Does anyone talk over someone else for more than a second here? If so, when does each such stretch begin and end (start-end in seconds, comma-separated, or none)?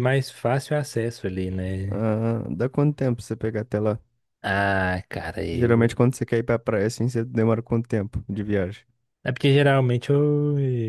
none